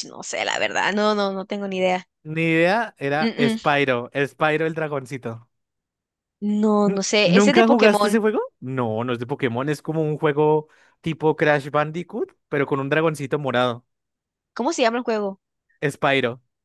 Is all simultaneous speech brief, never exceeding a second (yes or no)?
no